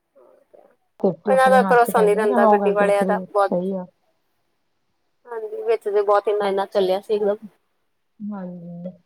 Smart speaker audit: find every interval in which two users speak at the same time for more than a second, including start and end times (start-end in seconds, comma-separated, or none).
1.3-3.5